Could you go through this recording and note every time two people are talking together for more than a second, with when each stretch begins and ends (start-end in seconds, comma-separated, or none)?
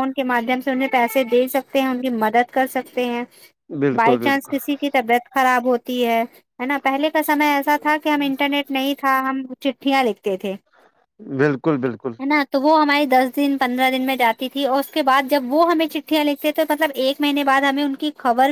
none